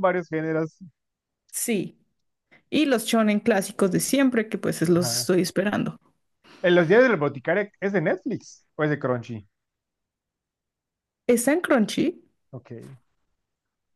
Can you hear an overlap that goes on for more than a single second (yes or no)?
no